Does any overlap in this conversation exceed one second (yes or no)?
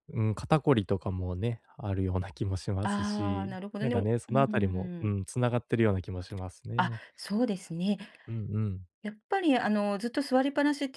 yes